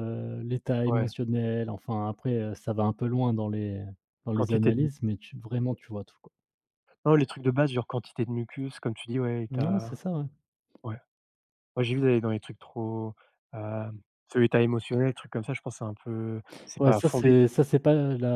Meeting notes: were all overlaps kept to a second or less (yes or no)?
yes